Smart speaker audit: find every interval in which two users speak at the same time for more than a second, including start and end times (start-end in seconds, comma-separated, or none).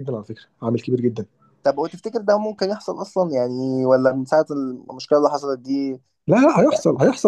none